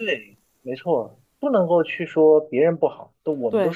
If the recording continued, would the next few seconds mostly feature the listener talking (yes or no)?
no